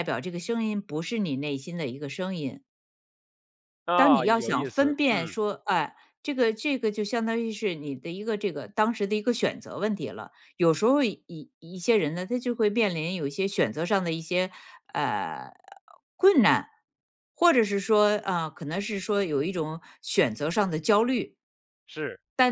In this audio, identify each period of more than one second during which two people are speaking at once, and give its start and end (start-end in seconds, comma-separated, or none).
4.0-5.4